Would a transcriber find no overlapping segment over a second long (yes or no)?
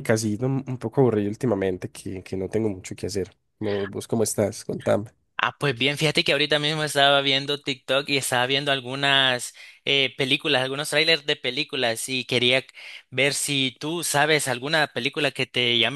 yes